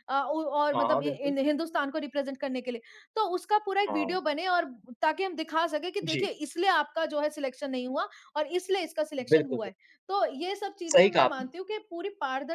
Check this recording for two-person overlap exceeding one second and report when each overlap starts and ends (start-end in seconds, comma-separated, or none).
none